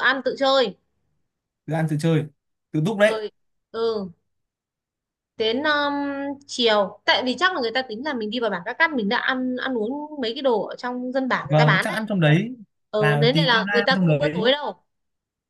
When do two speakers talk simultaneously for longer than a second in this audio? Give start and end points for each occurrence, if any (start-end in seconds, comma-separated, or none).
13.0-14.5